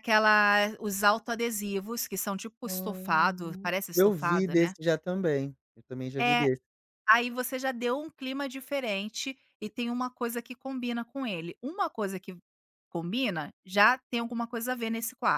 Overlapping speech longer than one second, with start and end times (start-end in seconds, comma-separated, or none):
2.6-4.7